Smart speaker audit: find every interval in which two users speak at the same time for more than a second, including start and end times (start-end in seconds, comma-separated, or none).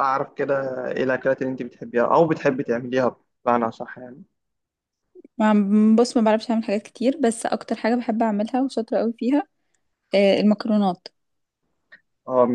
none